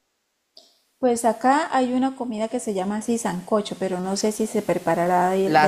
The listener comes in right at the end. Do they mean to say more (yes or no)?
yes